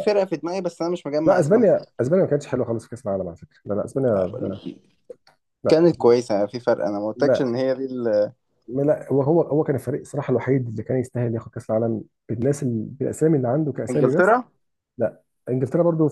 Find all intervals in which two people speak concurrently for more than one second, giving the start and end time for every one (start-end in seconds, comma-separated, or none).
none